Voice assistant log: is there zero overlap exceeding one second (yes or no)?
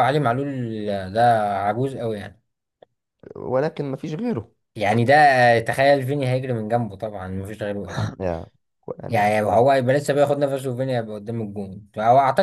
yes